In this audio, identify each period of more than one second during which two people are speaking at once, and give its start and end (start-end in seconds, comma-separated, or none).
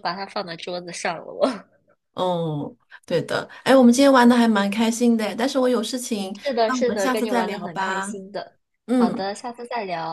6.4-8.1